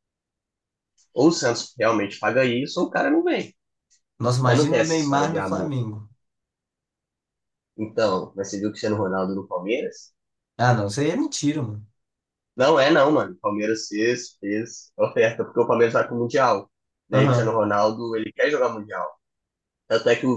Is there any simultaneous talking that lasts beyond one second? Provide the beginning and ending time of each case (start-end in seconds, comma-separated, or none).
4.4-5.7